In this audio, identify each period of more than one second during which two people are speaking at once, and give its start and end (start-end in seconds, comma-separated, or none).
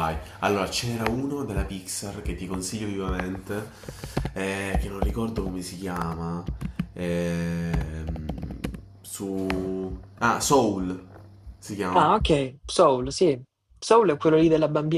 none